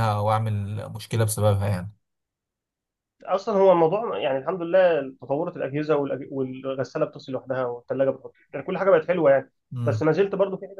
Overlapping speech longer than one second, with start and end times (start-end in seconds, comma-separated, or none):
none